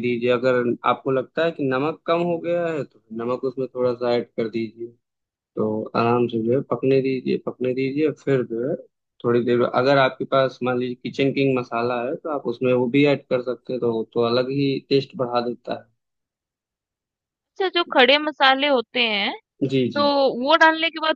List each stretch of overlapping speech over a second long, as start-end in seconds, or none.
none